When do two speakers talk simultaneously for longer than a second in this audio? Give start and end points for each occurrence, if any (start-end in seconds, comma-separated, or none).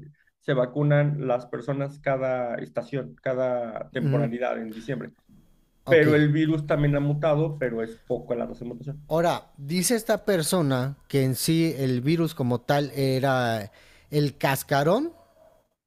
none